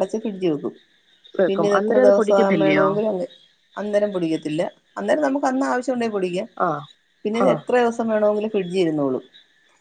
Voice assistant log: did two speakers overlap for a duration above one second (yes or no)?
yes